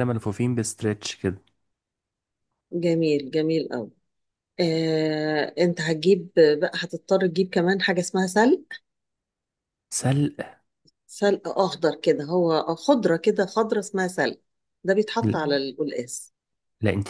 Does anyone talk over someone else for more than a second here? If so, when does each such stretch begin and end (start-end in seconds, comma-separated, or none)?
none